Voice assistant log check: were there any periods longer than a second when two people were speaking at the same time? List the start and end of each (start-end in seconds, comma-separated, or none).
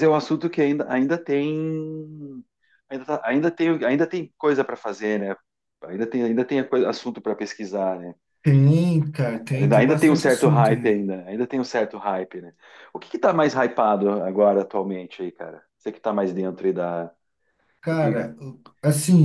9.6-11.0